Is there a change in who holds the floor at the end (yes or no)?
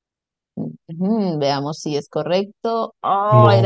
no